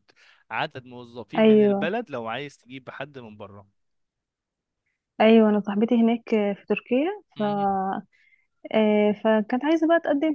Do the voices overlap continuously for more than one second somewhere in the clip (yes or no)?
no